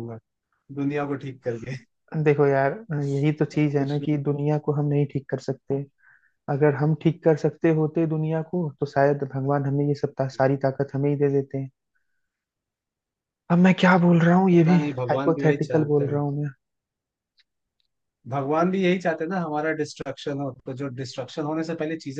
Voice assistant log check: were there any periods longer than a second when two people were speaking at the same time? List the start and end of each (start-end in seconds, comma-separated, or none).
14.5-16.2